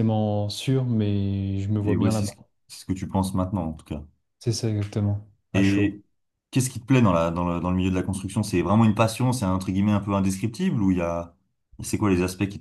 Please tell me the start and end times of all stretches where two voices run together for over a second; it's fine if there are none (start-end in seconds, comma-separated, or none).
none